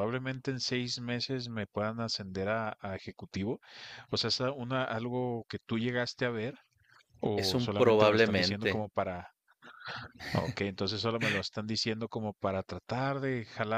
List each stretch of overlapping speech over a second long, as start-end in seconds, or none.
7.4-8.9